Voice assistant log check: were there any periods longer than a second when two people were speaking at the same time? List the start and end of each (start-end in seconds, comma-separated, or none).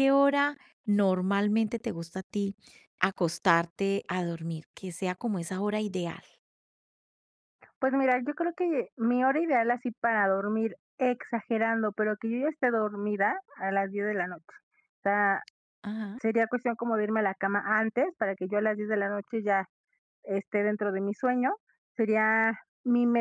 none